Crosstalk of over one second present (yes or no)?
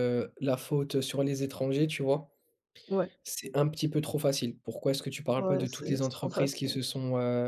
yes